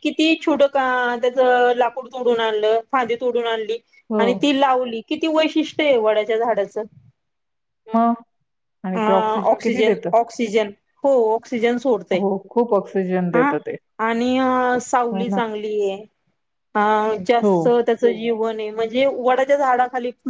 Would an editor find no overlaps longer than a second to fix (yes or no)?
yes